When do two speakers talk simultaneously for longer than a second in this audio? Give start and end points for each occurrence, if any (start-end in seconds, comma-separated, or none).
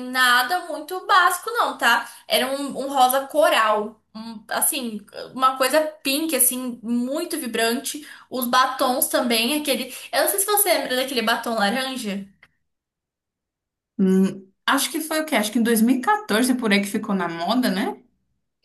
none